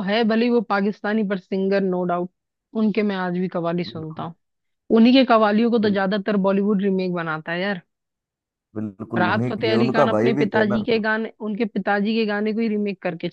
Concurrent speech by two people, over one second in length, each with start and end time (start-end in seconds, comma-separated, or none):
9.2-10.8